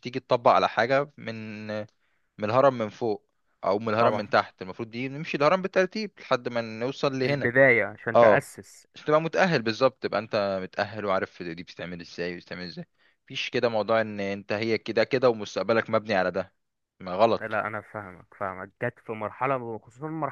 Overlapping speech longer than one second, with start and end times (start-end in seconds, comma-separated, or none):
none